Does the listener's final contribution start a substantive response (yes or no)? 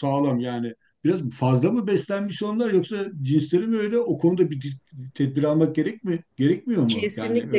yes